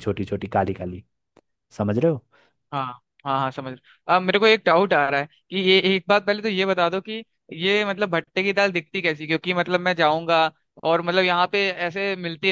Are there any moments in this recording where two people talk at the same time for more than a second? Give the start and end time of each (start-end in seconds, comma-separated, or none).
none